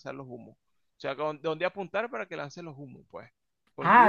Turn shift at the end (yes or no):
yes